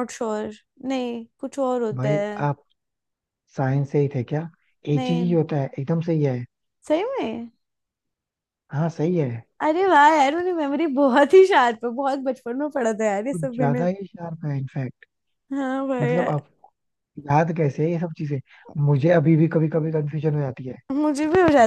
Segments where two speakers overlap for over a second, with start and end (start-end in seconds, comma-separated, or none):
none